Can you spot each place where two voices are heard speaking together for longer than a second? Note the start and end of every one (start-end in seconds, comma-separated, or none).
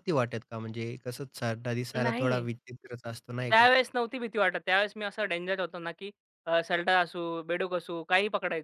none